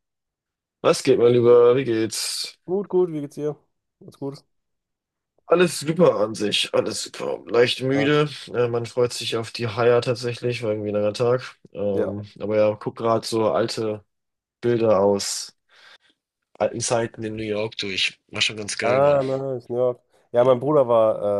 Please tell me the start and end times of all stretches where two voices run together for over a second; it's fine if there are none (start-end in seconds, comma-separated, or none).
none